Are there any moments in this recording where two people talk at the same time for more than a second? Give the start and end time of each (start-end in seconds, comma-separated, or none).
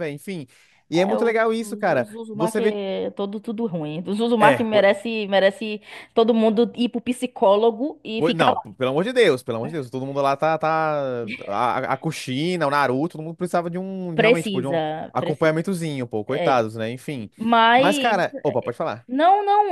0.9-2.8, 14.1-15.7